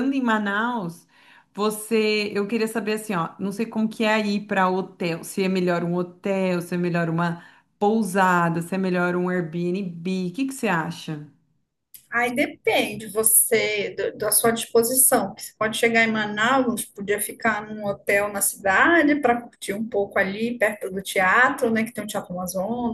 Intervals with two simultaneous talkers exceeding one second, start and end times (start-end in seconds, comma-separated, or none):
none